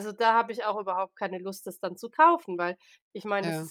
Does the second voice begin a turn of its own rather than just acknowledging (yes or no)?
no